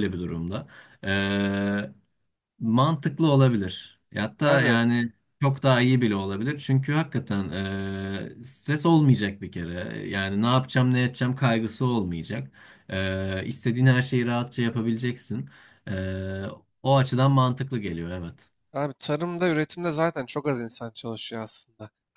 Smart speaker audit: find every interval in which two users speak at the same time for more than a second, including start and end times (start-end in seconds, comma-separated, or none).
none